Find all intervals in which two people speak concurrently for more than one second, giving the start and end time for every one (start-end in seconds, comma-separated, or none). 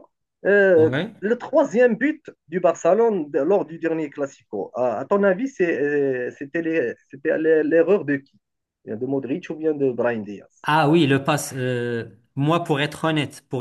none